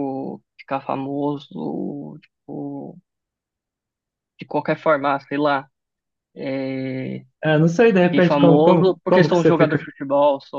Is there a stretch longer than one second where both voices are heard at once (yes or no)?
yes